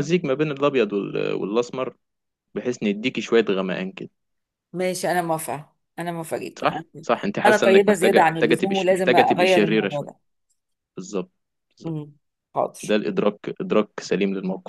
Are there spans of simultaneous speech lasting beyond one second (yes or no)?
yes